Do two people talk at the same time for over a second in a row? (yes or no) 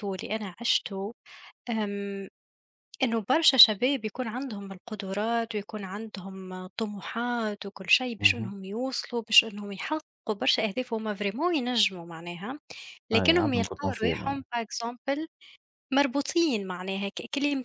yes